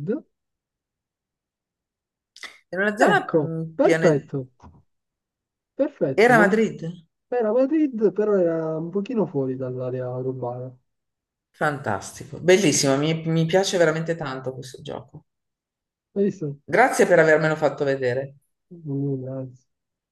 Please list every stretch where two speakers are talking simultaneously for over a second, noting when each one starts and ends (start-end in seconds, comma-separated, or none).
3.0-4.3